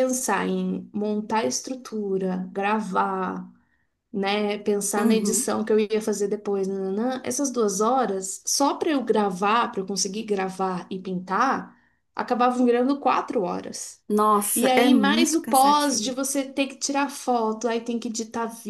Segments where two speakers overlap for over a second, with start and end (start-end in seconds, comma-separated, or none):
14.5-16.2